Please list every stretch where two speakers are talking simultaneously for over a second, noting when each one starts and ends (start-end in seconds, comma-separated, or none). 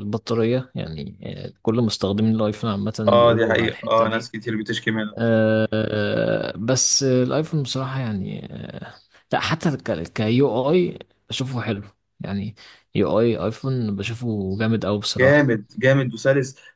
3.1-4.3